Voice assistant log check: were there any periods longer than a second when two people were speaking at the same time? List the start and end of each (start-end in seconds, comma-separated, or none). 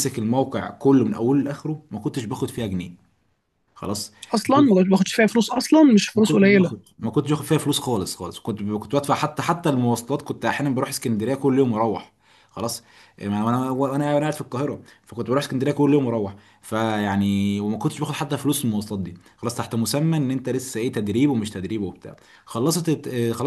none